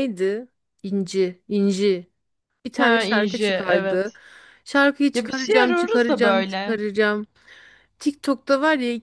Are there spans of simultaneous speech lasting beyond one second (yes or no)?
yes